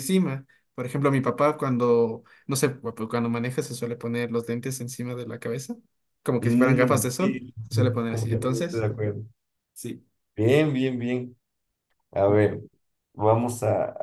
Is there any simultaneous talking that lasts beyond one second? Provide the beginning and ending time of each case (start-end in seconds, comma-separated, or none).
6.4-8.9